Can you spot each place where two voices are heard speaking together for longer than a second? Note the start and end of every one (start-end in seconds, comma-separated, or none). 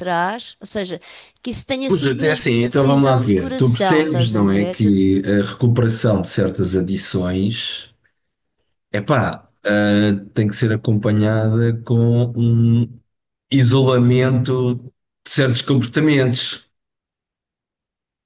1.9-4.9